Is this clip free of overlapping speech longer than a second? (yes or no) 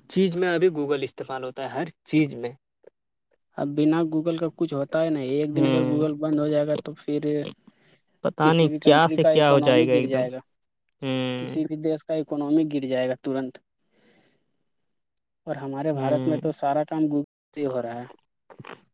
no